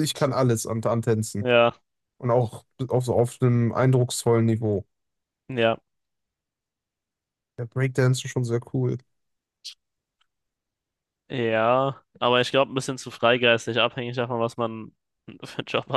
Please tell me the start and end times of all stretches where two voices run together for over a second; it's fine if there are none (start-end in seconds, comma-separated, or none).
none